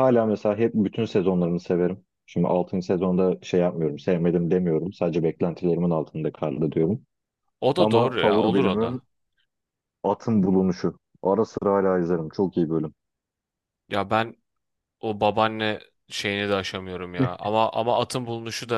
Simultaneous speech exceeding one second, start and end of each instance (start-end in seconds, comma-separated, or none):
7.8-9.0